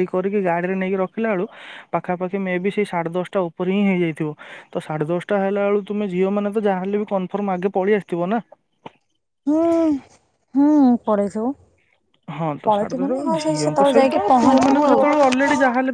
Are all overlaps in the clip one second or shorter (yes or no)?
no